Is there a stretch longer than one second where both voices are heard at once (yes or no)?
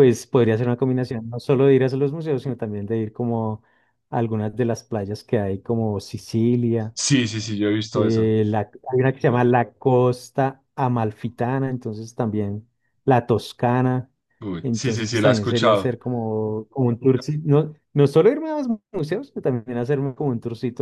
yes